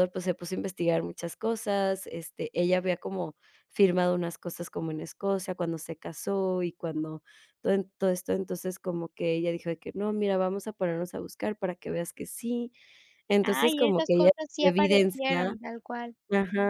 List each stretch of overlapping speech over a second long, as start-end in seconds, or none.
13.4-15.4